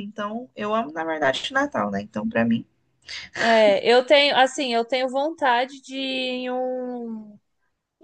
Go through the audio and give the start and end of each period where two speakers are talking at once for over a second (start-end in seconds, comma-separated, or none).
none